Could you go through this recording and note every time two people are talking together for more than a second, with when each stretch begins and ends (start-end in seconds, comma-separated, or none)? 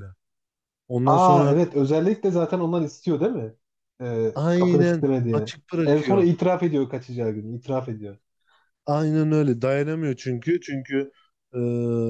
4.3-6.3